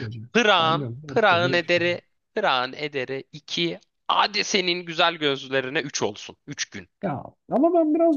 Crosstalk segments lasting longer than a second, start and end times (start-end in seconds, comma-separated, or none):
0.6-1.9